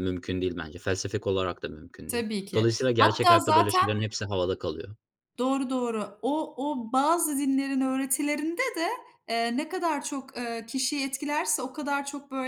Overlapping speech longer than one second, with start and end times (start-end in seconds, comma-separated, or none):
2.1-3.9